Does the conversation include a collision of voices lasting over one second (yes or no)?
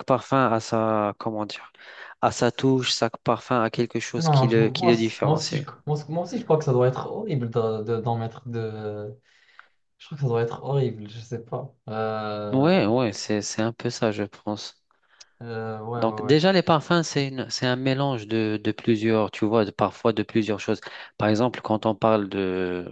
yes